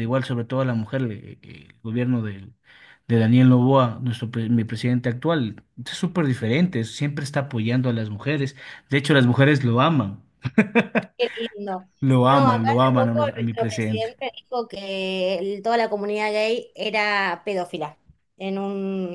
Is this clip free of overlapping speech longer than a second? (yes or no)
no